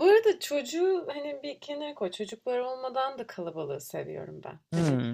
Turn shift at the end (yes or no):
no